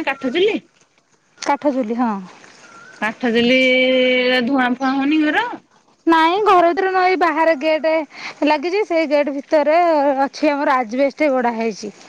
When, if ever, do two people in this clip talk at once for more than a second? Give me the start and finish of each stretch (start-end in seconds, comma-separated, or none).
none